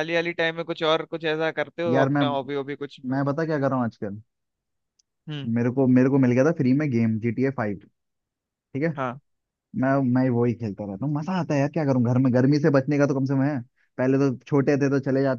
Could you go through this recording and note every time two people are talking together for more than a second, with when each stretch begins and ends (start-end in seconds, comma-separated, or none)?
none